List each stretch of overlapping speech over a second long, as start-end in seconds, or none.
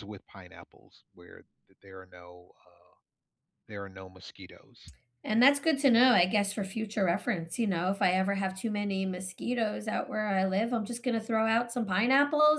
none